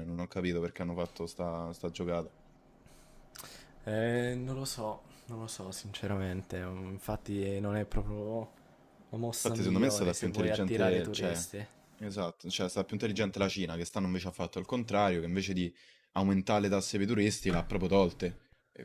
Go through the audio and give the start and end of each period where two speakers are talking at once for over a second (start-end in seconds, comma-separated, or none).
9.4-11.4